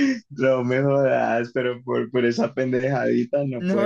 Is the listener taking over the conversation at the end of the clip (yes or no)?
yes